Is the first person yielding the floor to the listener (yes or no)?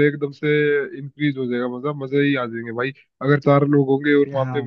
no